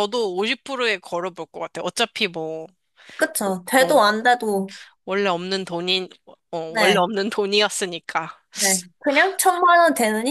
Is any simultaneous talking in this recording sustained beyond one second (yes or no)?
no